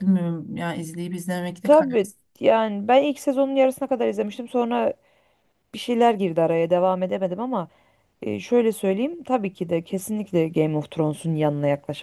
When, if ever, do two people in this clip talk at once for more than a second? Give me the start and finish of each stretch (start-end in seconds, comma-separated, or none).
none